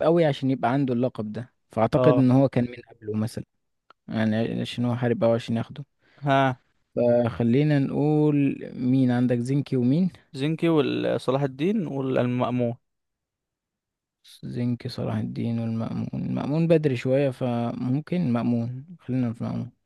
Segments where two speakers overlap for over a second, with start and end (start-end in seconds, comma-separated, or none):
none